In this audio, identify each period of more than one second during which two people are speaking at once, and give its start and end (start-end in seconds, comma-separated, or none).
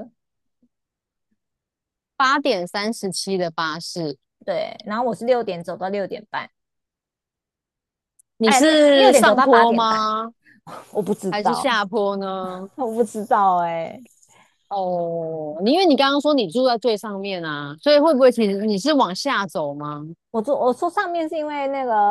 8.4-10.1